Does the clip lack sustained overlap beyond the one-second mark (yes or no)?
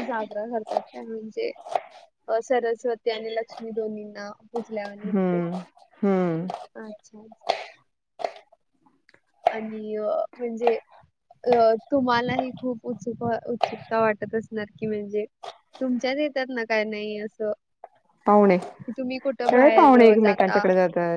no